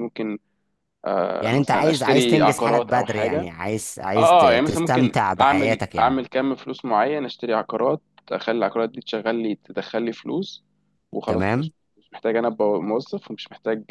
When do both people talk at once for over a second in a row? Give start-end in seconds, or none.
1.4-3.5, 4.2-6.2